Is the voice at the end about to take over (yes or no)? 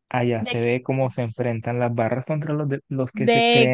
yes